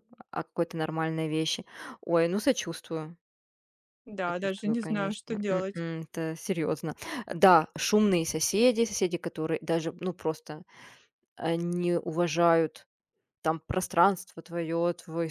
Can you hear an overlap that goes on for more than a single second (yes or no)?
yes